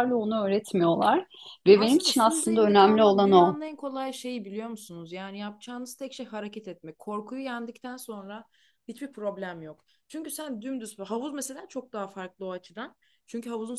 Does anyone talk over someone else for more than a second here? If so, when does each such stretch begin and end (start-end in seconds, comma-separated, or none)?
1.7-3.6